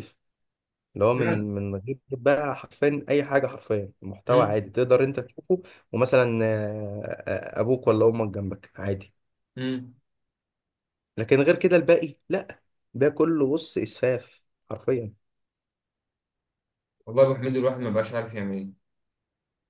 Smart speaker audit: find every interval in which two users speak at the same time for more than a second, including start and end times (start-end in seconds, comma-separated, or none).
none